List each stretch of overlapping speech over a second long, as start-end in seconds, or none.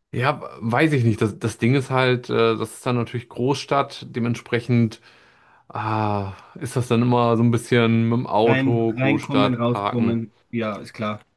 8.4-10.2